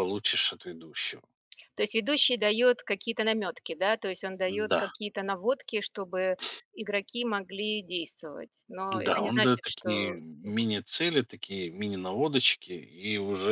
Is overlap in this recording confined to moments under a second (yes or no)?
no